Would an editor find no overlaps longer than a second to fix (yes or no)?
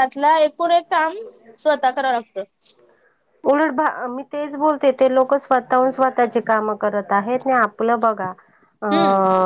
yes